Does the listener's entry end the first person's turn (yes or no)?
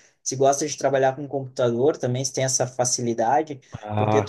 no